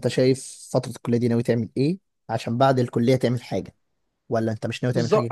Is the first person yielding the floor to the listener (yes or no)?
yes